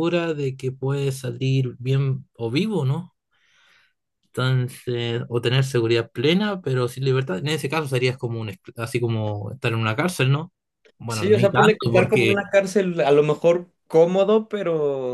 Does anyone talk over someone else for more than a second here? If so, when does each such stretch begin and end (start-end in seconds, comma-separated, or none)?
11.1-12.4